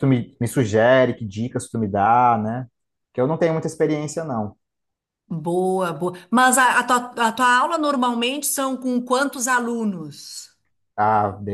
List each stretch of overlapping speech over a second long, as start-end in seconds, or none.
none